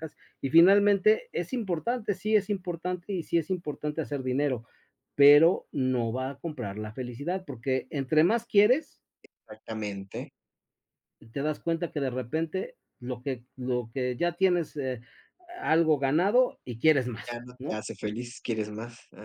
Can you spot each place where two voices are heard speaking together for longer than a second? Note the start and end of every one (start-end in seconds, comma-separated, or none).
none